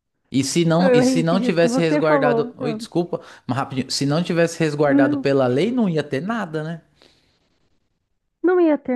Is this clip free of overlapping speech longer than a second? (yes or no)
no